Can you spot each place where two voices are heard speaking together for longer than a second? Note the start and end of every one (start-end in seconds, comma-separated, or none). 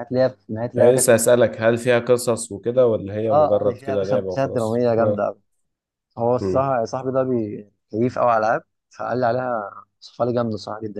3.3-5.3